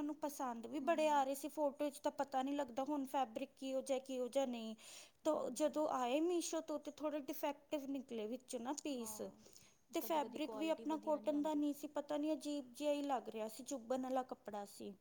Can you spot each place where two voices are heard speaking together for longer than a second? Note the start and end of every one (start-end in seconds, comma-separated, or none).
10.0-11.6